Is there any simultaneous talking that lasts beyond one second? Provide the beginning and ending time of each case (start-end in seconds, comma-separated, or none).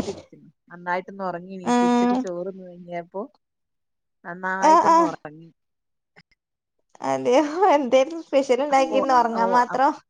none